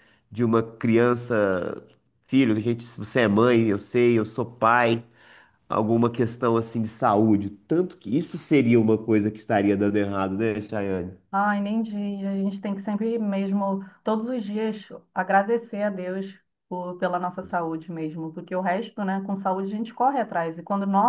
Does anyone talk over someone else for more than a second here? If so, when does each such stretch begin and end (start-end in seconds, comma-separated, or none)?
none